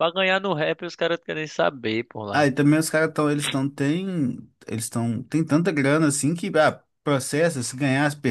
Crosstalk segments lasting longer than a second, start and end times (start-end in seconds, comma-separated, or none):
none